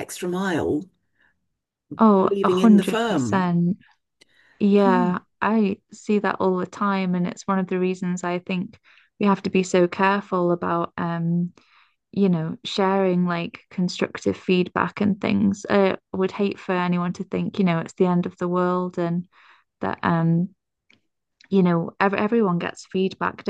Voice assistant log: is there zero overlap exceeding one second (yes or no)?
no